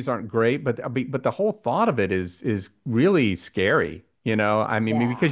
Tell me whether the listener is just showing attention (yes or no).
yes